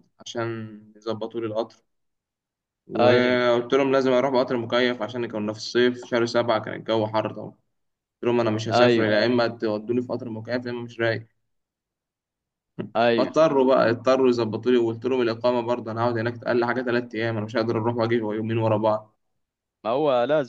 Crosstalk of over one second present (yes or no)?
no